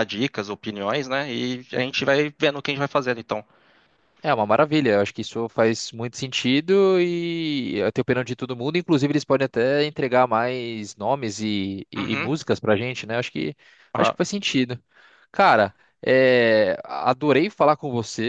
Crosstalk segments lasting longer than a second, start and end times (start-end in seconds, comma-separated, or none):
none